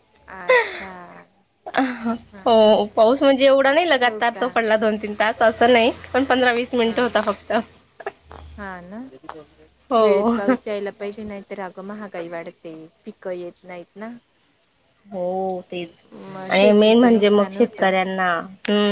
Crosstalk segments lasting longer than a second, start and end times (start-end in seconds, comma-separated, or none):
16.5-17.9